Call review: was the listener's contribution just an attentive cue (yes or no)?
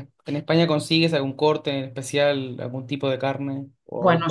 no